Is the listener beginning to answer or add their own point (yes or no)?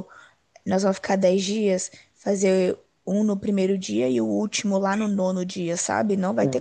yes